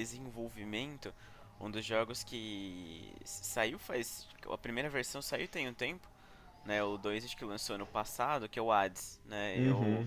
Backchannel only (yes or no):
yes